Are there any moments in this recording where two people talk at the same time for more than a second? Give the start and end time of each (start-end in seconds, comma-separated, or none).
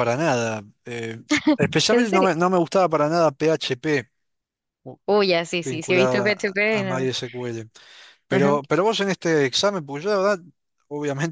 5.6-7.1